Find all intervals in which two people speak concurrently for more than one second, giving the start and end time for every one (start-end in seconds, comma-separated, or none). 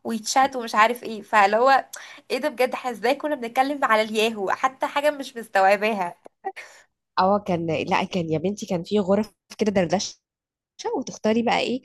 none